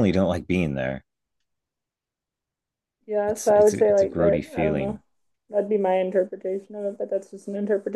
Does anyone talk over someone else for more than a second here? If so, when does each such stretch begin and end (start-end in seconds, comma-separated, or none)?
3.3-5.0